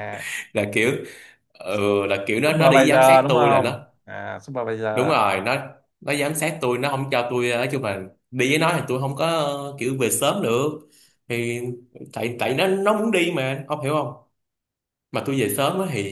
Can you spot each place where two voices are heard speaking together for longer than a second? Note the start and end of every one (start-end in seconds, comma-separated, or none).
2.5-3.8